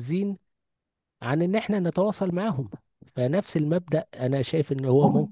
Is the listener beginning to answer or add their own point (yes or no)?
no